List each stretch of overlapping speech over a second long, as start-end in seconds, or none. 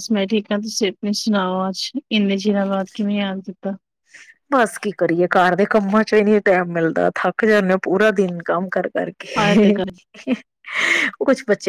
none